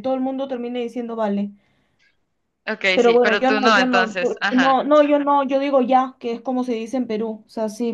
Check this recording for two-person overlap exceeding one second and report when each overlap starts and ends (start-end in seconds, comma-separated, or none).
2.9-4.8